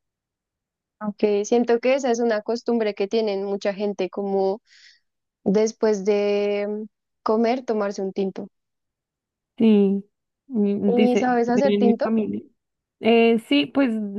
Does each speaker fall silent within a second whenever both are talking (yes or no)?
no